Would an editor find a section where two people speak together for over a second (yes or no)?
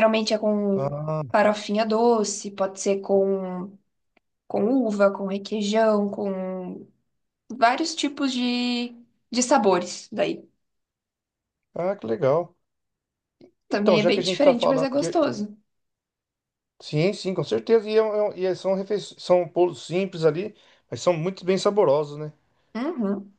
yes